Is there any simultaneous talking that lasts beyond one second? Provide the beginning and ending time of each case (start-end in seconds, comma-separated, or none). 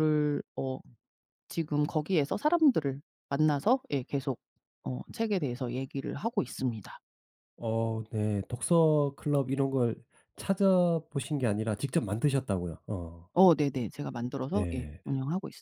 none